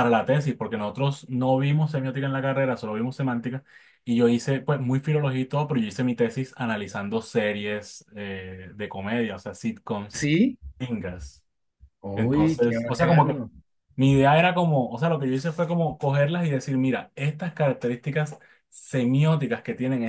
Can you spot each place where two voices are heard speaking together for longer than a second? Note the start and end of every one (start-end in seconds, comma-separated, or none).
12.1-13.4